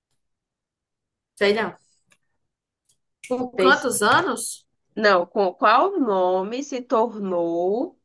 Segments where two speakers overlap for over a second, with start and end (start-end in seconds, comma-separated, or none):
none